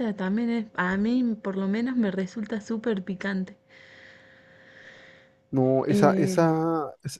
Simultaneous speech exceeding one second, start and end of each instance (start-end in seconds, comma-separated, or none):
none